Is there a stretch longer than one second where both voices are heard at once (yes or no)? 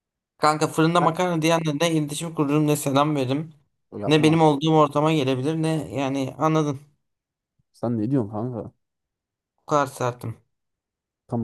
no